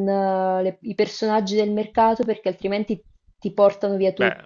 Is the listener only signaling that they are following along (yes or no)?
no